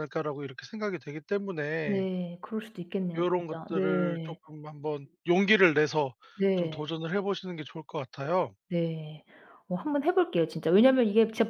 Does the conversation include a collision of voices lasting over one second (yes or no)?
yes